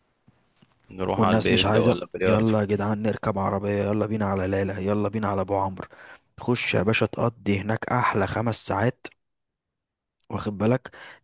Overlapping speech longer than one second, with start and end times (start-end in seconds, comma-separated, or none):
1.2-2.5